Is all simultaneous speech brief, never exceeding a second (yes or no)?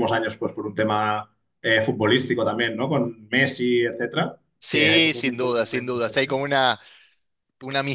no